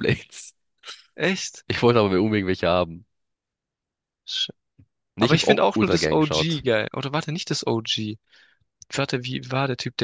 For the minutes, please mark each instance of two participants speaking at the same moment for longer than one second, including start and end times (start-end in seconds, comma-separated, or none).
5.2-6.6